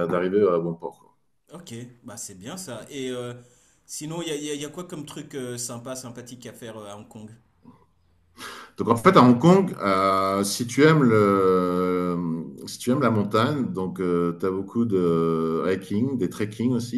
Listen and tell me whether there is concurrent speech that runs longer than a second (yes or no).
no